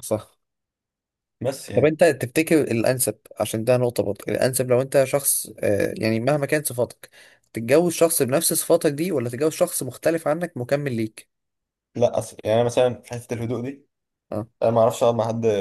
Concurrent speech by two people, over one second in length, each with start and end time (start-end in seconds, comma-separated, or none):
none